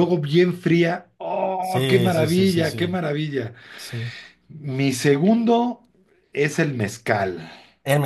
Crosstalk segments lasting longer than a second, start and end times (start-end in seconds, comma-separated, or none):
1.6-2.9